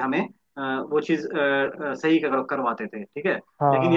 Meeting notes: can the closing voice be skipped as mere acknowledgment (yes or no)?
yes